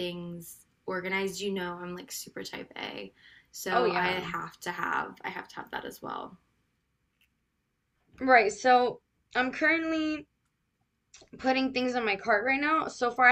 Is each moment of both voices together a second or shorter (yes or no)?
yes